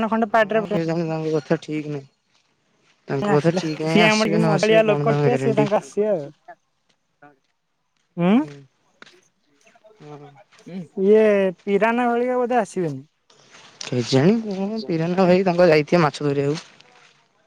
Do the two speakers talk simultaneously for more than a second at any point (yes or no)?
yes